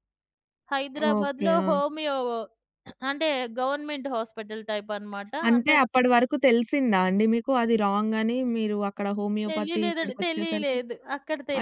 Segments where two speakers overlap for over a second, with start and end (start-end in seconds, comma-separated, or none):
9.5-10.8